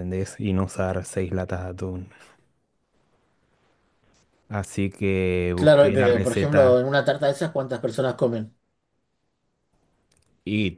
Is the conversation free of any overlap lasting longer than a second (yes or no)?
no